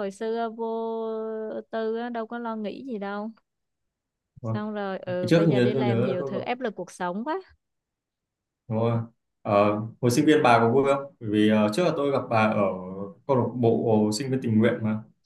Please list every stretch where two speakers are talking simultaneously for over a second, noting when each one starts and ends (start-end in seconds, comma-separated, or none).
5.1-6.6